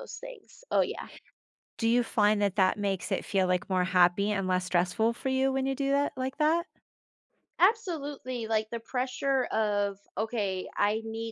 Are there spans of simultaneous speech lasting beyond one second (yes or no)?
no